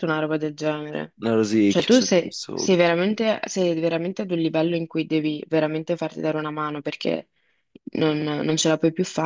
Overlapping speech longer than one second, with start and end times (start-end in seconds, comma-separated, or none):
1.7-2.9